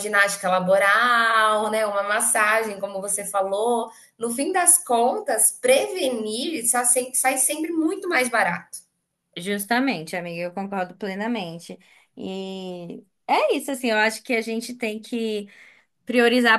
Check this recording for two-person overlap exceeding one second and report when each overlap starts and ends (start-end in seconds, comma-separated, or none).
none